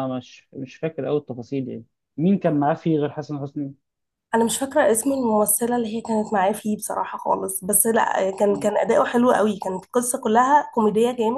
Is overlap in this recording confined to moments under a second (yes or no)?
yes